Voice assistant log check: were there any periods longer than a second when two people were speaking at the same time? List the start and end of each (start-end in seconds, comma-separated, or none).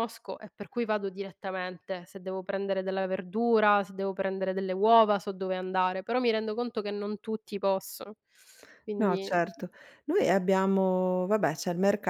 none